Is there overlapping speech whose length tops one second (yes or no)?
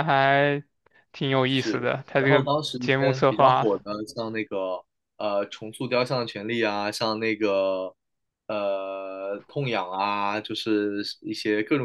yes